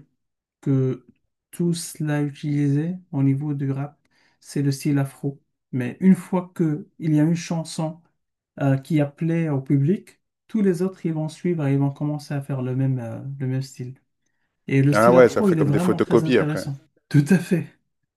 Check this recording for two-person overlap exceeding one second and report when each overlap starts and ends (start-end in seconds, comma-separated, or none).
14.9-16.7